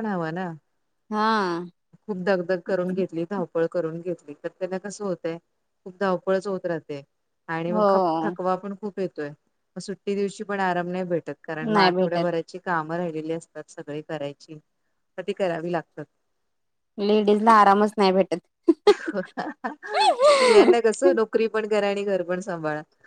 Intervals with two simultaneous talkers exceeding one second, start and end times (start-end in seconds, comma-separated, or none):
none